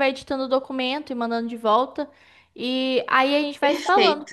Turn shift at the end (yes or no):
yes